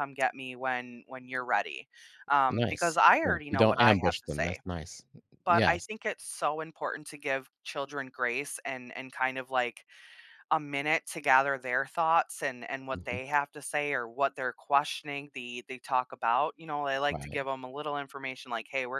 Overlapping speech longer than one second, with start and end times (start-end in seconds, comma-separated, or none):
2.5-4.6